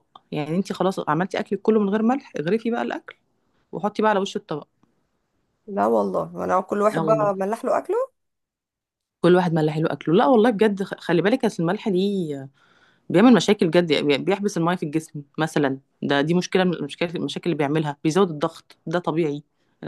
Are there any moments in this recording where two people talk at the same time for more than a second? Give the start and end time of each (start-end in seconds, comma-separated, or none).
none